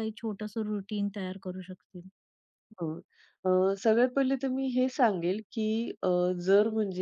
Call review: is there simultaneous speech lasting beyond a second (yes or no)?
no